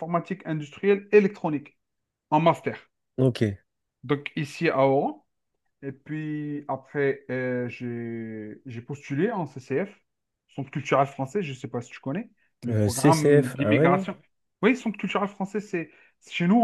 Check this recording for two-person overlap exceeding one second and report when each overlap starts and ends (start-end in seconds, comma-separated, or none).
12.7-14.1